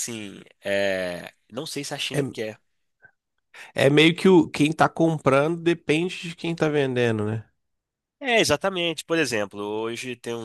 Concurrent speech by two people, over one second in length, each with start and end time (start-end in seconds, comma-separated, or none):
none